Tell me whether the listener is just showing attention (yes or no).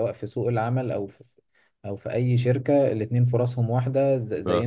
yes